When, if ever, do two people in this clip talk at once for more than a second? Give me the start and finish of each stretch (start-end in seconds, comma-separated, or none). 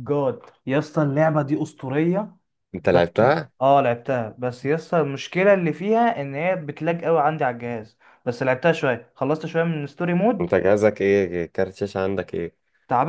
none